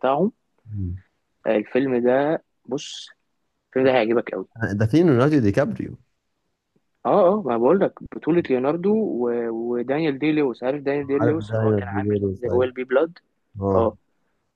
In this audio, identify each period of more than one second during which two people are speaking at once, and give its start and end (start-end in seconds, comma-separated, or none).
11.2-12.7